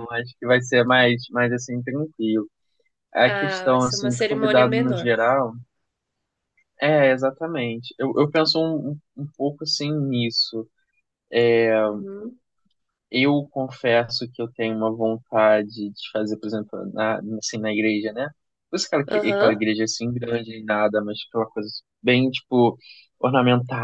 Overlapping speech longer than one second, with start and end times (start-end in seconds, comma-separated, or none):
3.2-5.1